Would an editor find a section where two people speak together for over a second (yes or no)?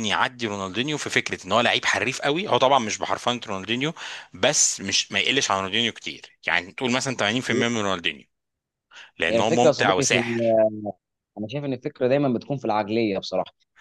yes